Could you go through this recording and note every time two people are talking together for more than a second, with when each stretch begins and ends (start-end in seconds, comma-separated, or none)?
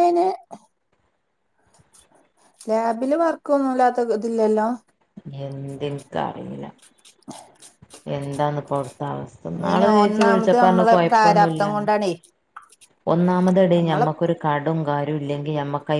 9.7-11.9